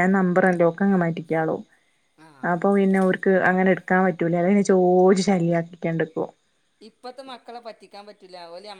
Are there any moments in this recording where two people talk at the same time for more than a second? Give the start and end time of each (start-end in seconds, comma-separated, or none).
none